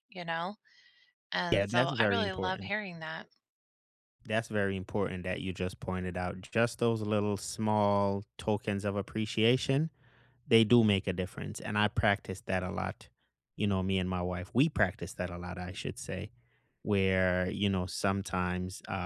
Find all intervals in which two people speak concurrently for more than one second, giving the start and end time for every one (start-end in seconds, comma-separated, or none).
1.5-2.7